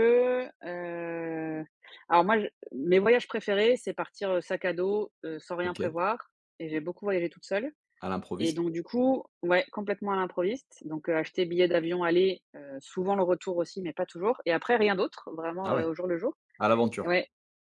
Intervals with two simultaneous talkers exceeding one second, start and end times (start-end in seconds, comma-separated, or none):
none